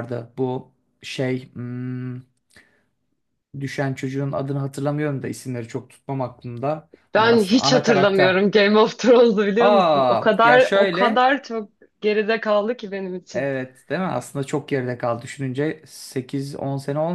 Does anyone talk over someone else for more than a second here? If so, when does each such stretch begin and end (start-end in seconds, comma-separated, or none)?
7.1-8.4, 9.6-11.3